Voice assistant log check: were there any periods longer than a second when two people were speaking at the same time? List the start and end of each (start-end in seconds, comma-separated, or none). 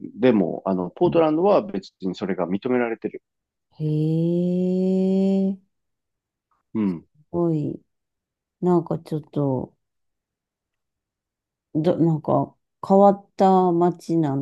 none